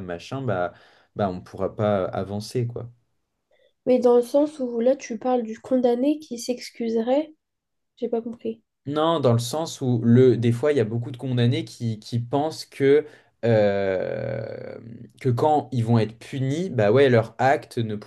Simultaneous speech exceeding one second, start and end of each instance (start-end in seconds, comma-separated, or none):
none